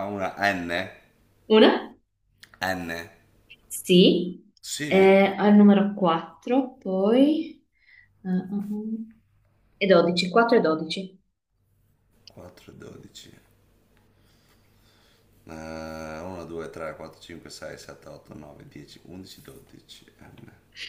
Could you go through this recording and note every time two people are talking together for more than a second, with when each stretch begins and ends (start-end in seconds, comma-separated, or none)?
none